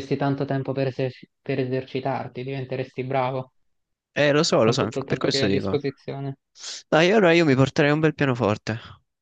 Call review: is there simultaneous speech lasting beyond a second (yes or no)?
yes